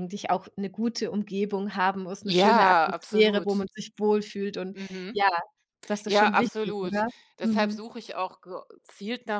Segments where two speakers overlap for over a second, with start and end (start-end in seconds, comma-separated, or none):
2.2-3.6, 6.0-7.8